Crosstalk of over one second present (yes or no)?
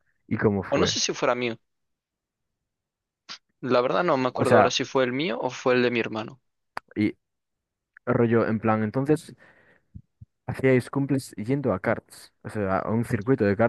no